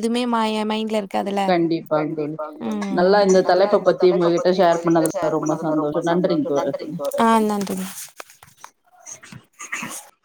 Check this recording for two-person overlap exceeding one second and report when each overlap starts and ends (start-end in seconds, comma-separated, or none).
3.5-6.1